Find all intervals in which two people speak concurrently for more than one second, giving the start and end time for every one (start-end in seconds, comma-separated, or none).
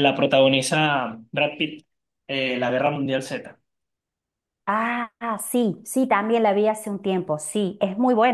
none